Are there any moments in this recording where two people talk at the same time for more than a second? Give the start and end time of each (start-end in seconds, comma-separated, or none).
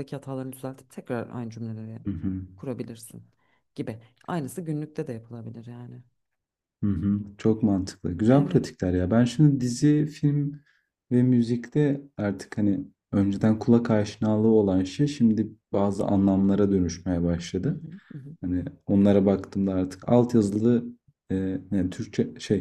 none